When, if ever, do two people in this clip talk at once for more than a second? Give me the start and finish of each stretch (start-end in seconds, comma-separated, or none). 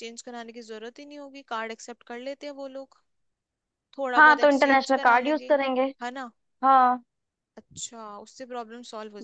4.2-5.5